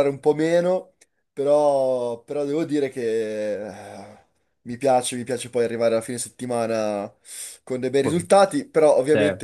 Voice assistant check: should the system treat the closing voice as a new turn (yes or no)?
no